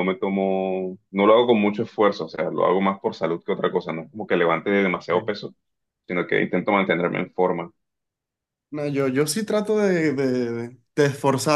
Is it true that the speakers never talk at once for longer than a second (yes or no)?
yes